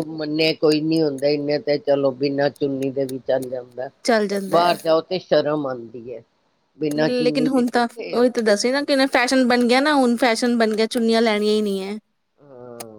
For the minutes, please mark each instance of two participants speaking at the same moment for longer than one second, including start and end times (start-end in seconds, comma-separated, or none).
none